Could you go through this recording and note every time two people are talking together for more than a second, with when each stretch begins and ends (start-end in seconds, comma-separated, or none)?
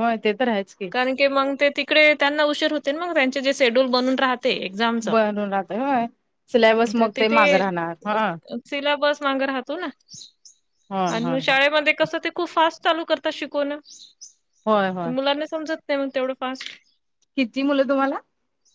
none